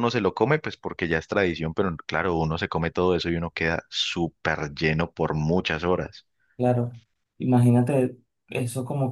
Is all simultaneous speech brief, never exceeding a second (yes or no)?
yes